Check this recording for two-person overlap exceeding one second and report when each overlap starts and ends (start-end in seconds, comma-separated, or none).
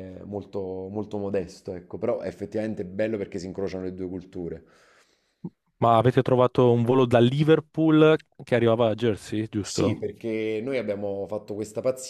none